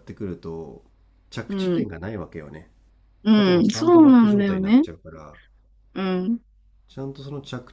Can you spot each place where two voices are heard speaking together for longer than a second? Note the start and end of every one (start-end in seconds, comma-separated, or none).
3.3-4.8